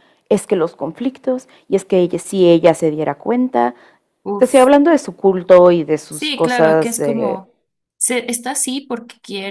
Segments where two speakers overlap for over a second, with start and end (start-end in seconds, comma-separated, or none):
6.1-7.4